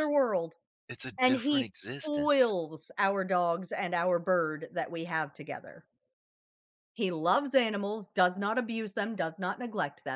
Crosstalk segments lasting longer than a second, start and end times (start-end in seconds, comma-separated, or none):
1.2-2.5